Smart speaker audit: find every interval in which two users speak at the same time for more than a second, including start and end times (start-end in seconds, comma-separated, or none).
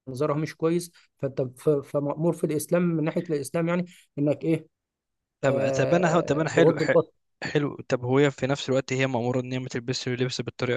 5.4-6.9